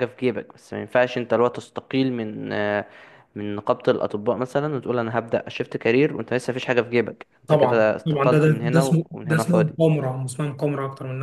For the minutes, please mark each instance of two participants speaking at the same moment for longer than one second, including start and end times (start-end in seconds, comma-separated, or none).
7.5-9.7